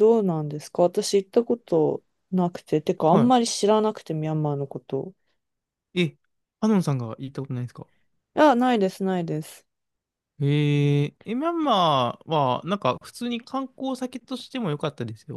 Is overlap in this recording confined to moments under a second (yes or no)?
yes